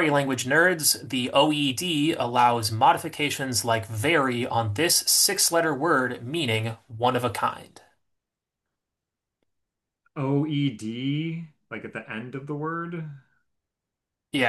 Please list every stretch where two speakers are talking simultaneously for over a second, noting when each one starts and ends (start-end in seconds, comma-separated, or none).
none